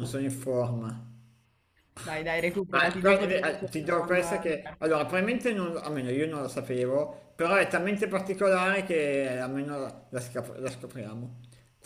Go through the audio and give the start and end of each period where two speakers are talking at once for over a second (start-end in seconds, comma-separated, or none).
2.7-4.9